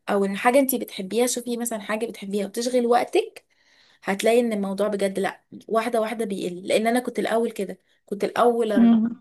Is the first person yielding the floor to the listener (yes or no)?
no